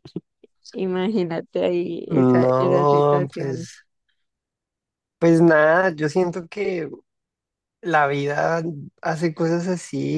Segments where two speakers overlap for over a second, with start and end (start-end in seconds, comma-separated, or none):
2.1-3.6